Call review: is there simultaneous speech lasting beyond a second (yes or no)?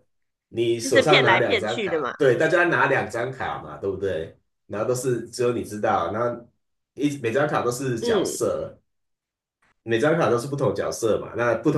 yes